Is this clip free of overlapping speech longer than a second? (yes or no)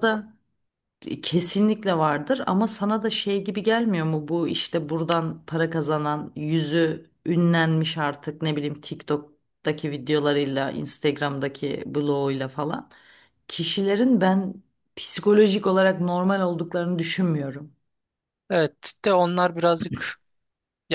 yes